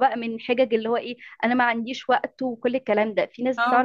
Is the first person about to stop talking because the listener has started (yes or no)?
no